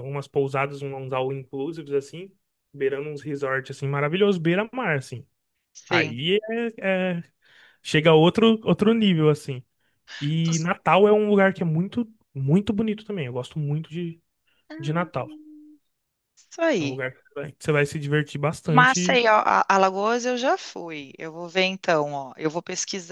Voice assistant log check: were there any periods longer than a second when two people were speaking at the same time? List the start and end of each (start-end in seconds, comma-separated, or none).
none